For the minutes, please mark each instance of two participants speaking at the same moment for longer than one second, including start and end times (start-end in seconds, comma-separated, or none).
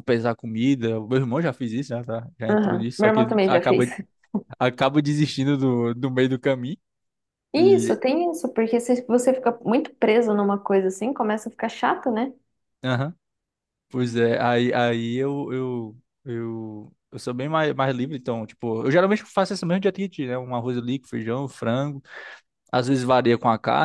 2.5-3.9